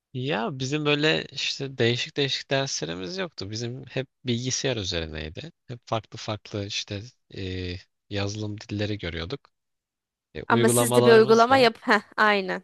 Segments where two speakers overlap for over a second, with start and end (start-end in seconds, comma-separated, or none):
10.5-11.7